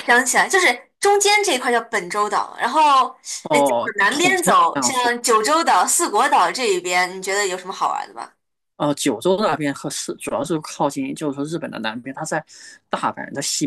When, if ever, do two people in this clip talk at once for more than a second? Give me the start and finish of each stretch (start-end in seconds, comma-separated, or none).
3.5-5.1